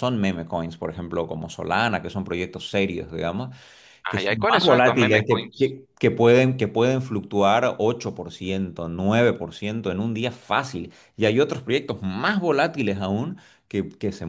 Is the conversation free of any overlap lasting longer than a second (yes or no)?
no